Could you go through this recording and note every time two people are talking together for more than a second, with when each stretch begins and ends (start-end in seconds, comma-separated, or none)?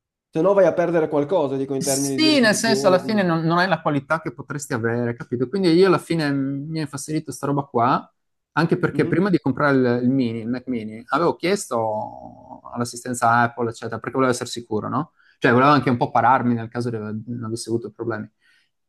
1.8-3.3